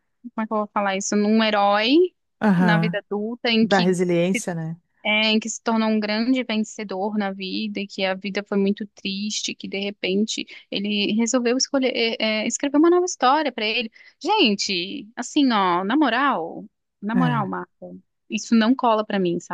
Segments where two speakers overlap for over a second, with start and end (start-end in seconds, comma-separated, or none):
none